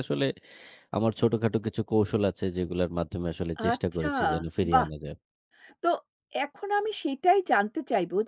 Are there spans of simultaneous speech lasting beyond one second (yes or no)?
no